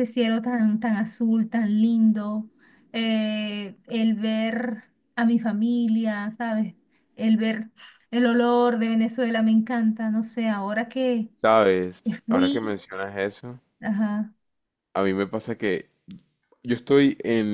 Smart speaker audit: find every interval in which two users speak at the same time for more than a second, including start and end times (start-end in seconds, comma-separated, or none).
none